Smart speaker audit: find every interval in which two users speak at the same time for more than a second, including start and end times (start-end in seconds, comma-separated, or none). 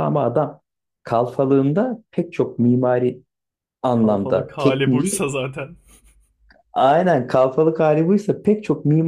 3.9-5.2